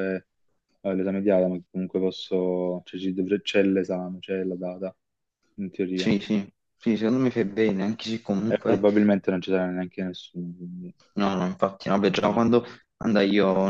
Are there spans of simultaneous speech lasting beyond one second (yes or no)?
no